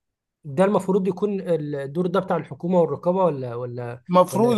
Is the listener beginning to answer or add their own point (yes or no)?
yes